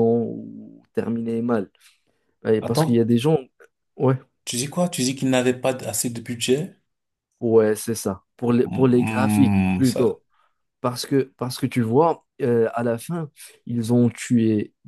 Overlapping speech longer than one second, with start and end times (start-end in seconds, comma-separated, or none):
8.7-10.1